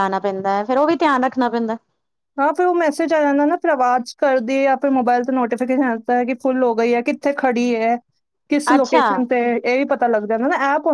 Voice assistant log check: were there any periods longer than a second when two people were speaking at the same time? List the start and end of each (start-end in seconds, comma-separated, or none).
none